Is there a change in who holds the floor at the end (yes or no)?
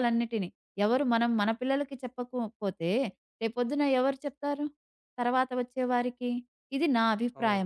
no